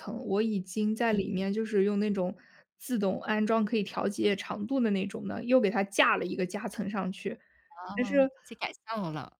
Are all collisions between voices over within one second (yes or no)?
yes